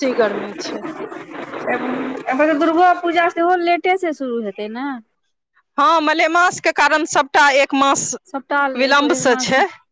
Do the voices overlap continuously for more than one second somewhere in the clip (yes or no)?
no